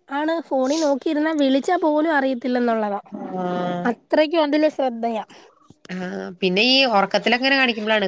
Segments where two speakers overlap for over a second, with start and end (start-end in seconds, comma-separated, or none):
none